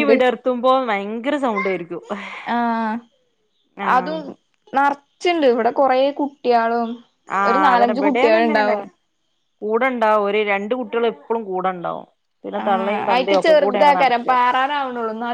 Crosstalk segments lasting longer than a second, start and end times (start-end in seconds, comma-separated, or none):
12.6-14.3